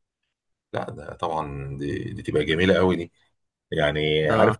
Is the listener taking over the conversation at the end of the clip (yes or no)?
yes